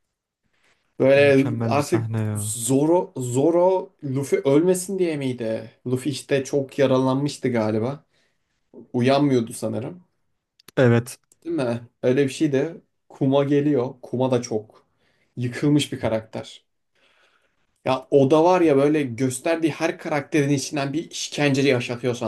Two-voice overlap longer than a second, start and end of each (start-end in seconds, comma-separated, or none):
1.2-2.6